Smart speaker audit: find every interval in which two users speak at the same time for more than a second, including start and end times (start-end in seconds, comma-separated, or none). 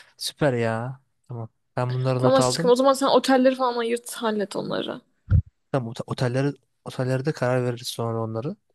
none